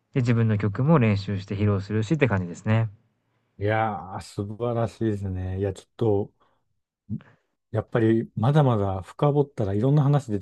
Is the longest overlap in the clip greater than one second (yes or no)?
no